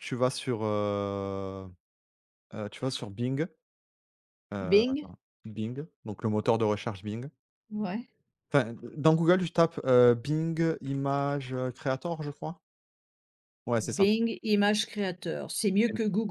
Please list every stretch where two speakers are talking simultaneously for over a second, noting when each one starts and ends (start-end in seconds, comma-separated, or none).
none